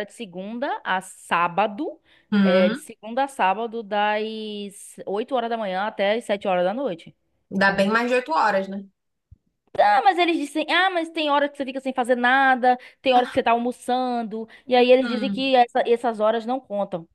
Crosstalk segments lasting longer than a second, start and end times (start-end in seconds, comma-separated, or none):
none